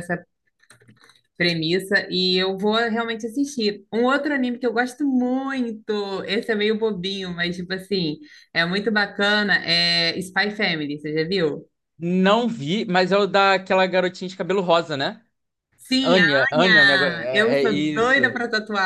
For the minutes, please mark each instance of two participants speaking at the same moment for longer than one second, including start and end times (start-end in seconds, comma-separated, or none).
16.0-18.4